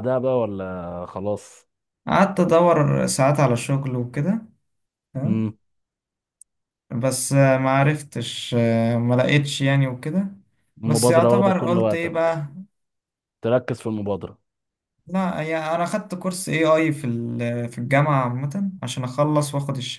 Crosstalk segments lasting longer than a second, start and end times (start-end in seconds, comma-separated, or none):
10.8-12.4